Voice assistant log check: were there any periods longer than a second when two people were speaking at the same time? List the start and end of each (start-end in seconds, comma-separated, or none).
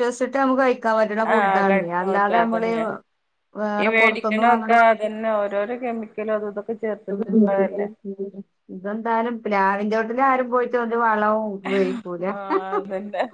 1.4-2.7